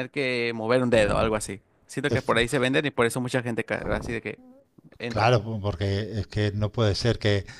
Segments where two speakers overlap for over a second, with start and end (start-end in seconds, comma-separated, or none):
none